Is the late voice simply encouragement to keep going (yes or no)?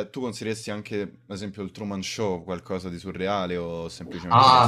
no